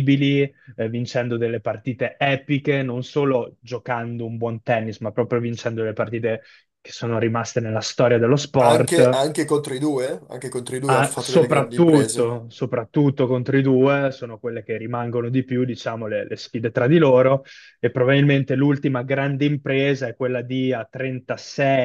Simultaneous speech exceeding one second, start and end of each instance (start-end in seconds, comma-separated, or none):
10.8-12.4